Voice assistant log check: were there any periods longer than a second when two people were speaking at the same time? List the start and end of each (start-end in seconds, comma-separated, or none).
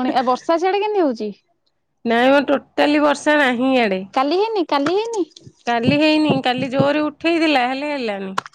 none